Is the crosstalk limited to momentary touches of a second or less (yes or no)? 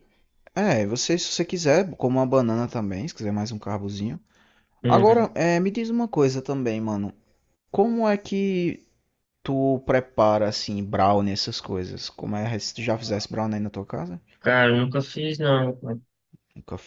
yes